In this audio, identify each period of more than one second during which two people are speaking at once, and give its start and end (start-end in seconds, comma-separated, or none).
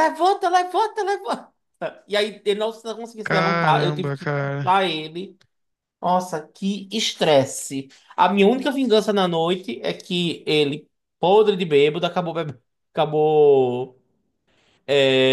3.2-4.8